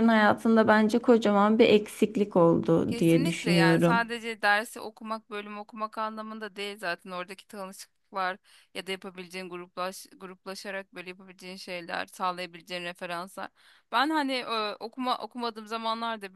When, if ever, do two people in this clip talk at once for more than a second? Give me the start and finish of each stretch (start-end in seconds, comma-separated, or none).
2.9-4.1